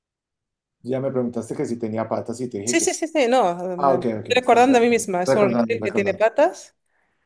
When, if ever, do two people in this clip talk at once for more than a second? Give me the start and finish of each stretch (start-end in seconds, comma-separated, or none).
3.8-6.2